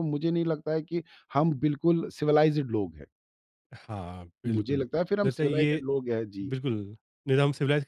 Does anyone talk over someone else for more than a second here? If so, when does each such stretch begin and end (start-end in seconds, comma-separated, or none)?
4.5-5.8